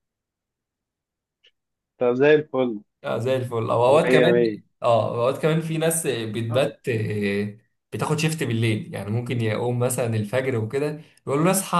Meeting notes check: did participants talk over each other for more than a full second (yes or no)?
no